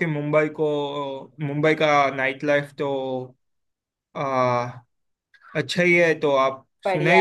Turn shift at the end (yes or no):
no